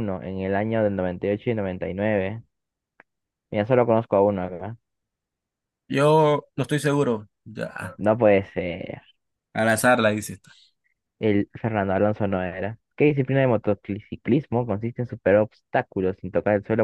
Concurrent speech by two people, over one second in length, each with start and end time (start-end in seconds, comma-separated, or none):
none